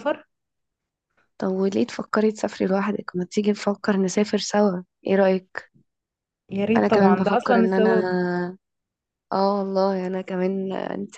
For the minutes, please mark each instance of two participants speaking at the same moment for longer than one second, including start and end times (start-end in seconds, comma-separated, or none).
6.8-8.1